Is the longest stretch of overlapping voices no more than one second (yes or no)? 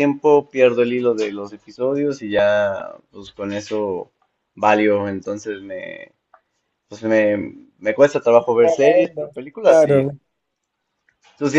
no